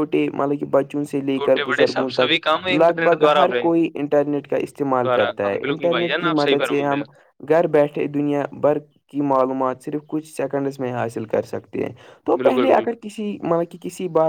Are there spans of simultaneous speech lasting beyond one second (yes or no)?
yes